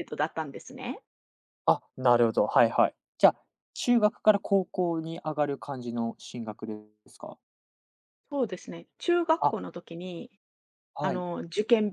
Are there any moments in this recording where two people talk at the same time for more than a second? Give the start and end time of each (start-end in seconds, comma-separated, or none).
none